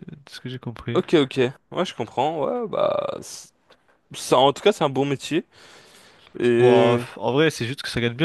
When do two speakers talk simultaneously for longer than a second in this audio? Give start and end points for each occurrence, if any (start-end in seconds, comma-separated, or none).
none